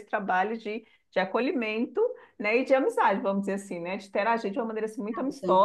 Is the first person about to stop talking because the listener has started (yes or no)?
no